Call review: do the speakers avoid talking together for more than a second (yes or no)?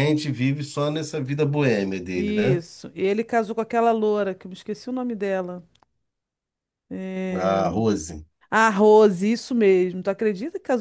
yes